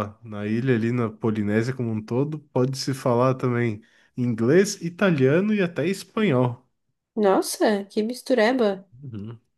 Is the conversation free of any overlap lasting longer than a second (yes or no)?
yes